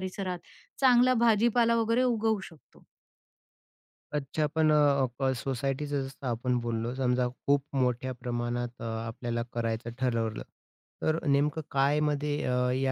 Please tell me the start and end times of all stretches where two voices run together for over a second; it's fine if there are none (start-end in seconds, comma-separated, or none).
none